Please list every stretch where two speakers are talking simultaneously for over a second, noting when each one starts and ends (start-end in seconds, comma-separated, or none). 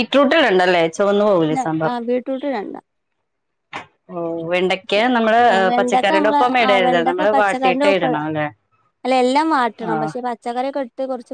5.8-8.1